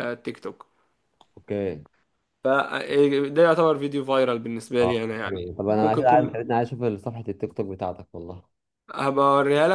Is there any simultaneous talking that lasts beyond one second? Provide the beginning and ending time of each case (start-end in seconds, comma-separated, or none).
4.8-6.3